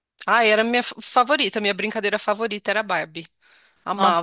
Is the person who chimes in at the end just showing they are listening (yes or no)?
no